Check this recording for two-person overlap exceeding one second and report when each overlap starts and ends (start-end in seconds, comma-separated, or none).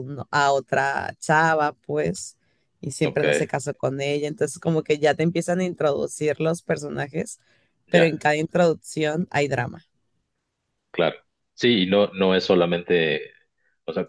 none